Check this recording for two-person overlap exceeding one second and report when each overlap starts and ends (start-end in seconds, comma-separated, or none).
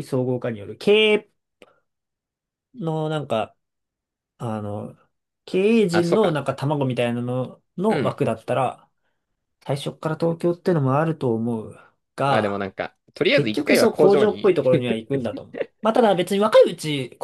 13.3-14.6